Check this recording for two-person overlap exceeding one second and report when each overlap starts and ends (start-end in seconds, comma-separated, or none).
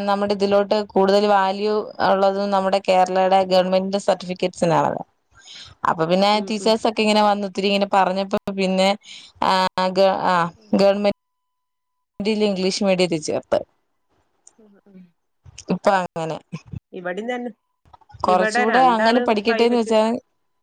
18.3-19.9